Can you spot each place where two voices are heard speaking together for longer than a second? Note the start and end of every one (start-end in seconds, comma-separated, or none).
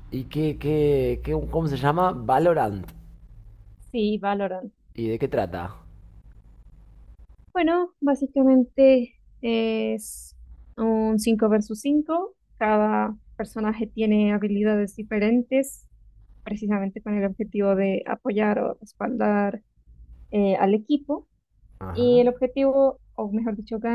none